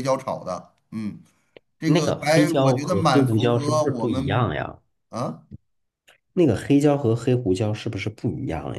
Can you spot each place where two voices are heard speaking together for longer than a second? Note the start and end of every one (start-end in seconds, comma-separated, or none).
1.8-4.5